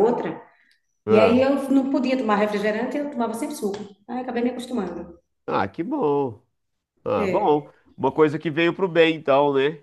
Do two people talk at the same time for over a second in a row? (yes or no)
no